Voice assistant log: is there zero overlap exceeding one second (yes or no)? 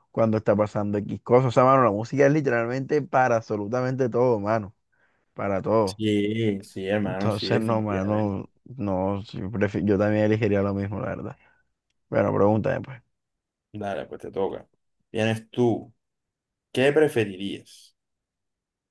no